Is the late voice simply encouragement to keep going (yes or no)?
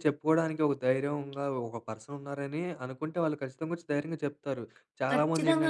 yes